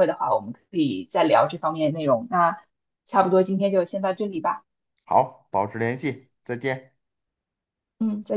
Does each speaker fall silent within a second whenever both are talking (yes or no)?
yes